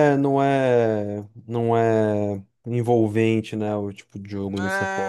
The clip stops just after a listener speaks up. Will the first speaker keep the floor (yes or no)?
no